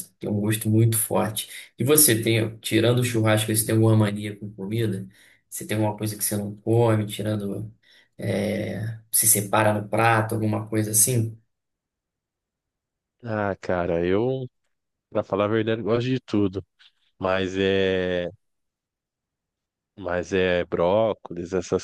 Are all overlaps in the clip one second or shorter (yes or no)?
yes